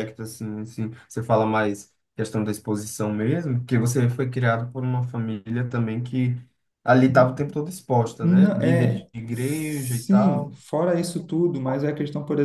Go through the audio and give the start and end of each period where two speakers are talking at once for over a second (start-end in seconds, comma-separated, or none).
8.2-10.6